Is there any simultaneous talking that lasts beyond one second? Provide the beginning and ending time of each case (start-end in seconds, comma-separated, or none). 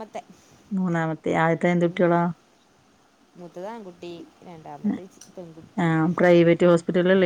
none